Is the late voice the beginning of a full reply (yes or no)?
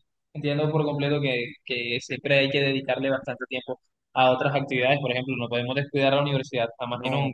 yes